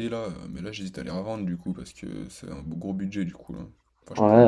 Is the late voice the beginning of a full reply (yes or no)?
yes